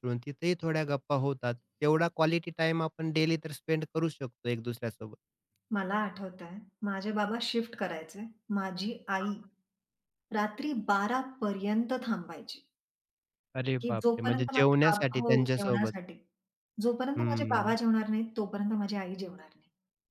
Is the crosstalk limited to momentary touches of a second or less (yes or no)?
no